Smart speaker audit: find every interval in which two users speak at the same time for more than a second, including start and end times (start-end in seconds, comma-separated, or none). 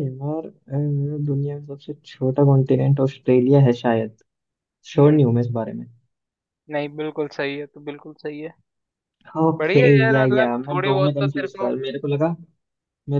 9.6-11.7